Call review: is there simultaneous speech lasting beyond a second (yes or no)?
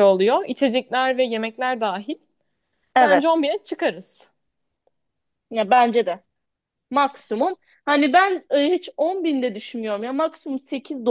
no